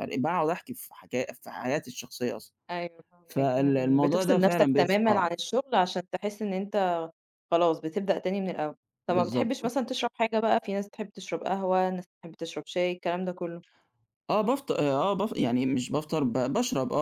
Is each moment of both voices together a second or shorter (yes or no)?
no